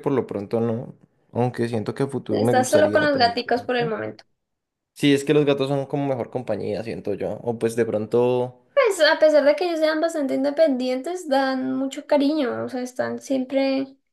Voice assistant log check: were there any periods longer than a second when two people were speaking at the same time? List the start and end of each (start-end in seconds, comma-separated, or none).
2.3-3.9